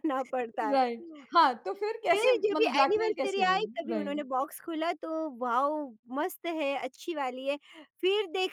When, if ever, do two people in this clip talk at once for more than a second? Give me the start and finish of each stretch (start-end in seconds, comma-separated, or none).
2.1-4.2